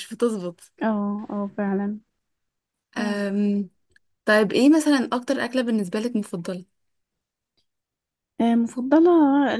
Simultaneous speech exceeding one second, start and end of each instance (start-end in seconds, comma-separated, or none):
none